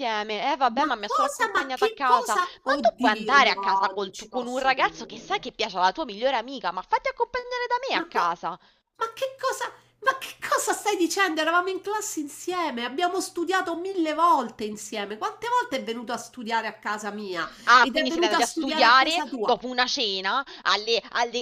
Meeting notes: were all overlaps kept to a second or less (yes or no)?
no